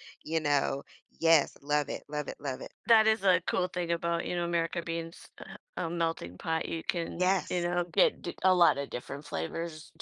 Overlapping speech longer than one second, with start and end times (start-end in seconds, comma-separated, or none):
none